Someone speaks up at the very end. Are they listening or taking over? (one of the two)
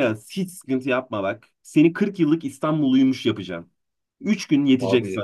listening